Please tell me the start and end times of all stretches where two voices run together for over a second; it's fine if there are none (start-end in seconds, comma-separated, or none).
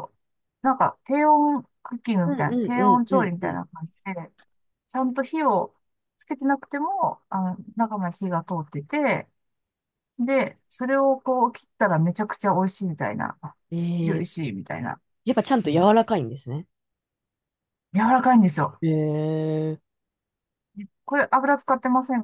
2.2-3.6